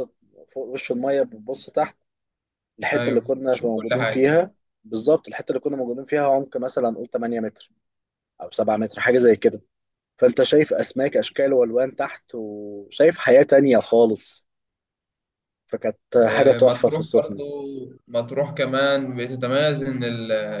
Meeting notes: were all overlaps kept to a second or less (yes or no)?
no